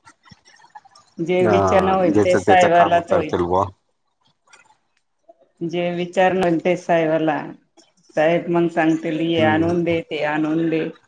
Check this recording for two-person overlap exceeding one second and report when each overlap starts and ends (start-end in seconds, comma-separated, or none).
1.4-3.3